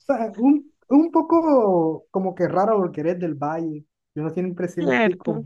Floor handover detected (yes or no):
no